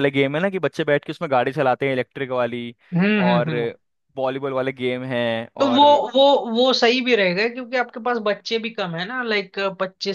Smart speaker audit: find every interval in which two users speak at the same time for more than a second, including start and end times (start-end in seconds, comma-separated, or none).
none